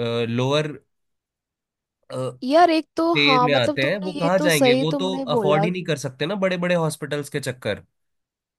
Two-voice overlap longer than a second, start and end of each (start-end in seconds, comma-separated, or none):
3.1-5.7